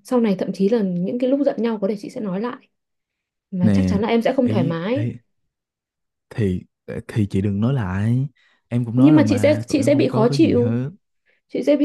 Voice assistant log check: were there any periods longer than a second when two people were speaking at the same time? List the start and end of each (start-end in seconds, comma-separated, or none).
8.9-10.8